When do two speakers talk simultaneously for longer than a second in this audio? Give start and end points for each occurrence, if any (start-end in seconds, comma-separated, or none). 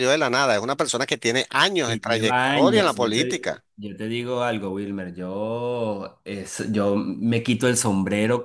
1.8-3.6